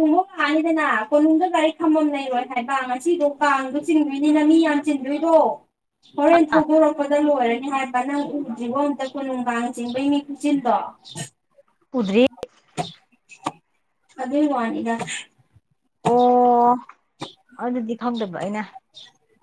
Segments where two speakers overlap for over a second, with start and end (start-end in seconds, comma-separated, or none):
none